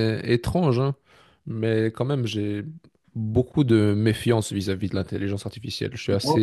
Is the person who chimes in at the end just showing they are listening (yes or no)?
yes